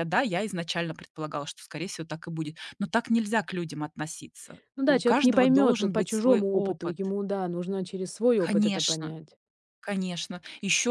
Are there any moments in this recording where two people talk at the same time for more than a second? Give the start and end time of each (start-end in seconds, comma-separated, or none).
4.8-7.0